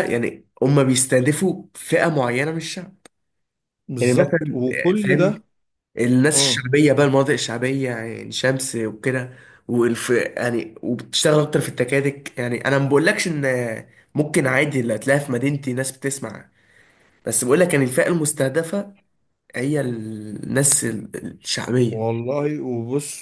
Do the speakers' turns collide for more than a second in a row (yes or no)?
yes